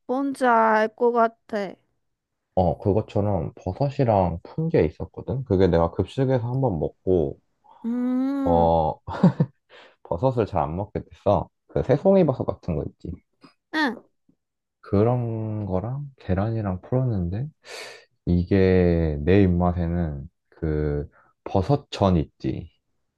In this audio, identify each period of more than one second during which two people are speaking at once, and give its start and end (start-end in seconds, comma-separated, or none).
none